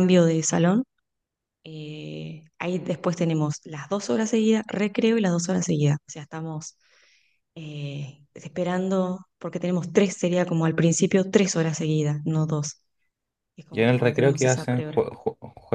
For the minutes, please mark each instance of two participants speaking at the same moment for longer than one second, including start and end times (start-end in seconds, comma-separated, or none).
13.7-15.0